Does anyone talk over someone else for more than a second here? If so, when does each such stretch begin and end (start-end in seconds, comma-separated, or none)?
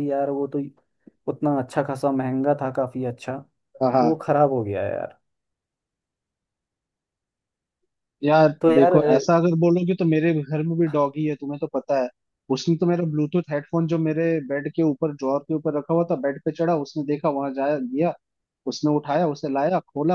none